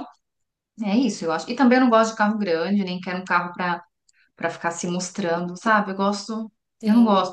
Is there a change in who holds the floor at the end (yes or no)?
no